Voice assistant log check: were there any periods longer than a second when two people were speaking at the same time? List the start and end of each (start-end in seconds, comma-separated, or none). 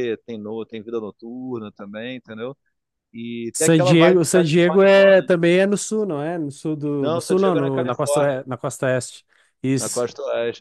3.5-5.3, 7.0-8.4